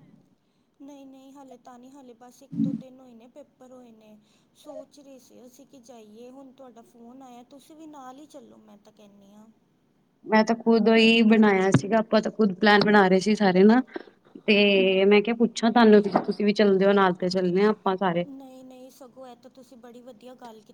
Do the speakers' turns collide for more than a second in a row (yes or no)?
no